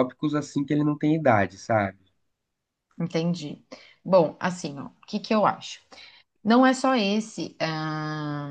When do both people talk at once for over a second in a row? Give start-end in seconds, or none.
none